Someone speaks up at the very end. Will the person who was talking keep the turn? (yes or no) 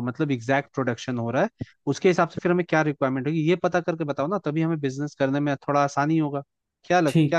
no